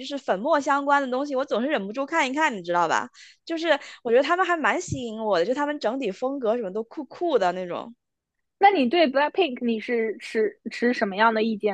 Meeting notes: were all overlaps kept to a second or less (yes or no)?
yes